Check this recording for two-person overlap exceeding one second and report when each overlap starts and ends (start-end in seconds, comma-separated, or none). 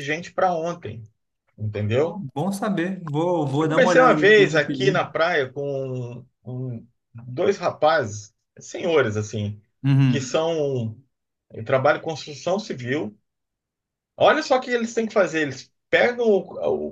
3.6-4.9